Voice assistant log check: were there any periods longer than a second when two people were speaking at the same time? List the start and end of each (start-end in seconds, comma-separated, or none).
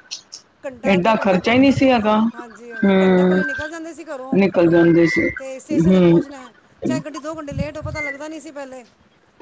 0.9-2.2